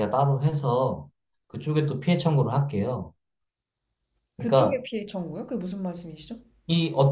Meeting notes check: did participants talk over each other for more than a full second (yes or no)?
no